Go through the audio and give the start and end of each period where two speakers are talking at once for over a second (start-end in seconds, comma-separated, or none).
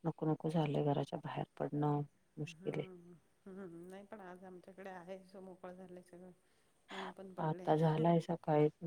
none